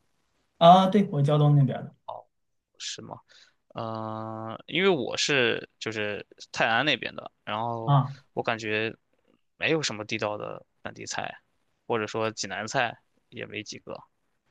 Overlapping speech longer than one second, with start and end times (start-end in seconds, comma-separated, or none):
none